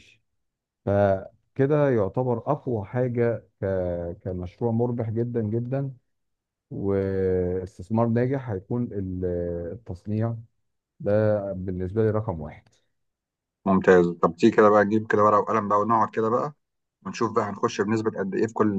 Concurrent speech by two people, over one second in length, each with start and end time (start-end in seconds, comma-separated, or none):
none